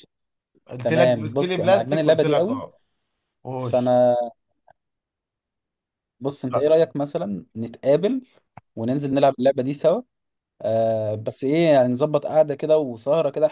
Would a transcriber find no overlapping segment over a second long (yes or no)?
no